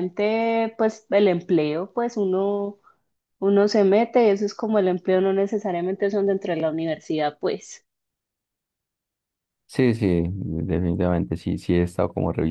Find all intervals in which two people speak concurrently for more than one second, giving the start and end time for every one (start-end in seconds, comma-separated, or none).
none